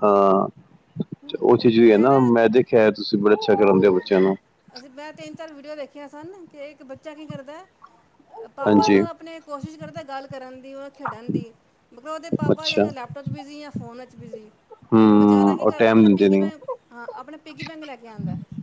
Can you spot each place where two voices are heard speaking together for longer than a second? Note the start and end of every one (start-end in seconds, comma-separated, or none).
15.1-16.5